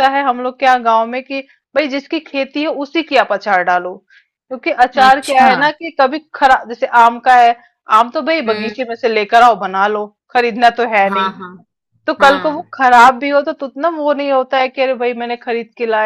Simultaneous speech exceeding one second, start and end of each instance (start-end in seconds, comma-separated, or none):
none